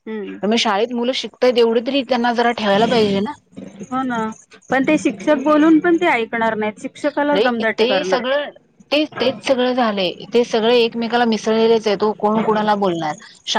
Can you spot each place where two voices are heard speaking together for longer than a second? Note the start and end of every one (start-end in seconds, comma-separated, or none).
none